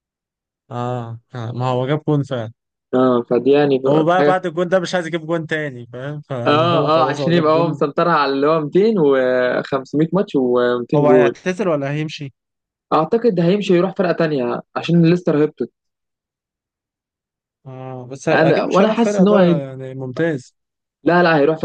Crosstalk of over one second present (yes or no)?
yes